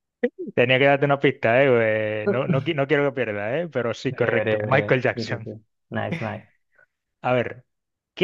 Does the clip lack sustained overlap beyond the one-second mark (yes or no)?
no